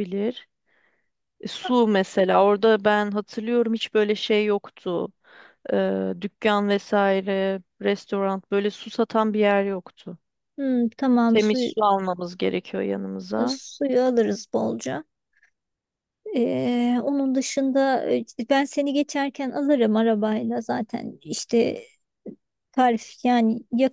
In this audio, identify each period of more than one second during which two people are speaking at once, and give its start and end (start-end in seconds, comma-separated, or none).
none